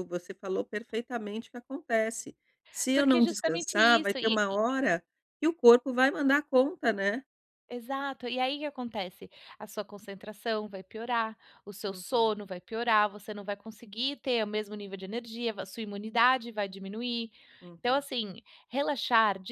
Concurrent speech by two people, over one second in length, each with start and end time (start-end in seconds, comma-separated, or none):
2.9-4.4